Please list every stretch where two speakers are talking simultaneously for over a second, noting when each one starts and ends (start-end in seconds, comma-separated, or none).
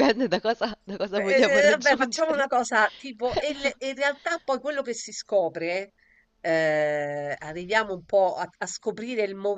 1.1-2.5